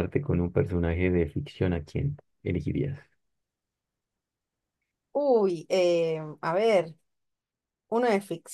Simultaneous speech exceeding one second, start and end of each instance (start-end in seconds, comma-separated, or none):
none